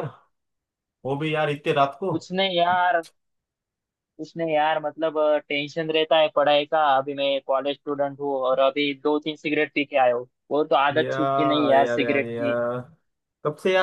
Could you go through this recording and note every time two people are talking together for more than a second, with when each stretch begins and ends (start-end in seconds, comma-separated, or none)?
11.0-12.6